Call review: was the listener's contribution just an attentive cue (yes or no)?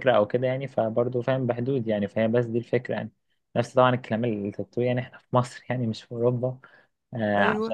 yes